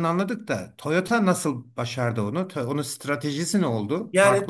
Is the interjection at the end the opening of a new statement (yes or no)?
yes